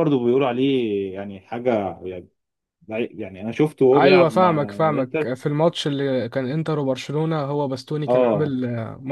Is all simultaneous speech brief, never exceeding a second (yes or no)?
no